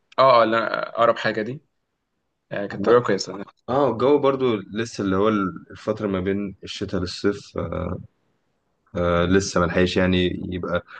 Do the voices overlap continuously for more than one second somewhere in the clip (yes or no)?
no